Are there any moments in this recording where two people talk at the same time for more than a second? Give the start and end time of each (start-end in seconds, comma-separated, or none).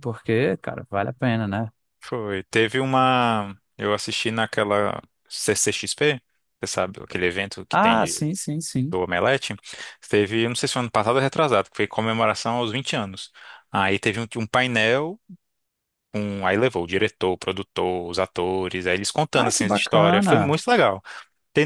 19.3-20.6